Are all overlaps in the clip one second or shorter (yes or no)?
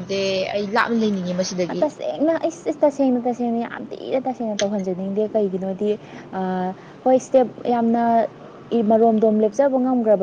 yes